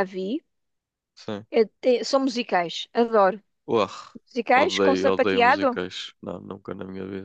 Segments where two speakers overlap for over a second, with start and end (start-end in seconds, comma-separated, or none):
4.5-5.8